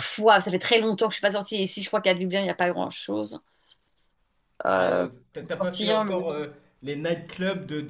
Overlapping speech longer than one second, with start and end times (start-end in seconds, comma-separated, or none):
4.8-6.4